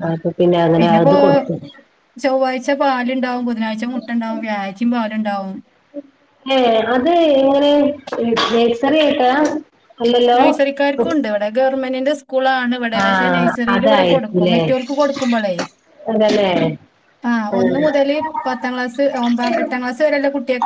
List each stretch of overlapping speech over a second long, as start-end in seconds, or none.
13.0-14.6